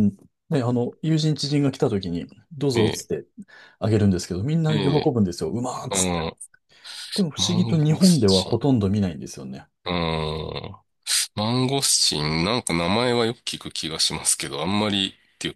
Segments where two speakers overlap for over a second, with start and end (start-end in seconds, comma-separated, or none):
7.3-8.7